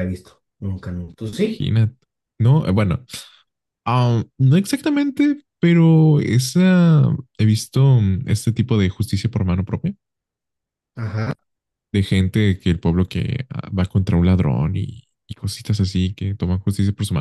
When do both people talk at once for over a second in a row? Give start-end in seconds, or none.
none